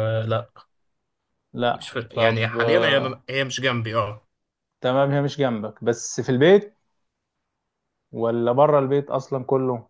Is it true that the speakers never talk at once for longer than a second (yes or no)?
no